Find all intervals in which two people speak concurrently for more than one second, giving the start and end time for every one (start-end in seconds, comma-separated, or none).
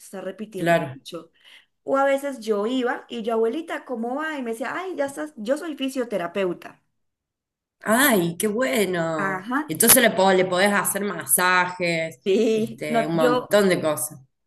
12.2-13.6